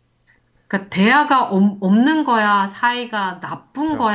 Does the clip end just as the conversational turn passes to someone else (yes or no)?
no